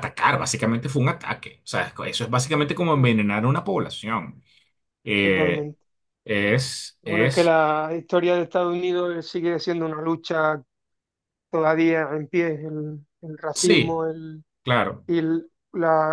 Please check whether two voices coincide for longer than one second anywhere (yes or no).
no